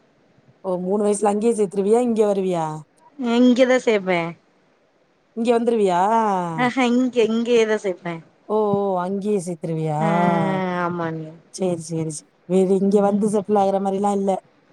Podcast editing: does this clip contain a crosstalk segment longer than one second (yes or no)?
no